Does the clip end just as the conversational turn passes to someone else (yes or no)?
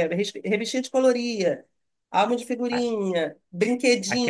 yes